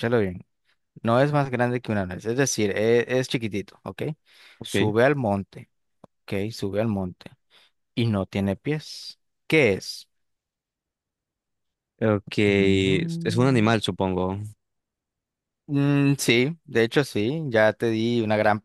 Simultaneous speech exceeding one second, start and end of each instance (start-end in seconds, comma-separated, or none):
12.5-13.8